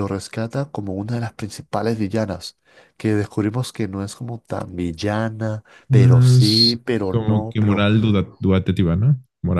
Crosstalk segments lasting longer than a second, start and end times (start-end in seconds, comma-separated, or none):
5.9-7.8